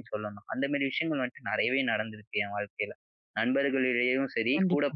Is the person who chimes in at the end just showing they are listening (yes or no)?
yes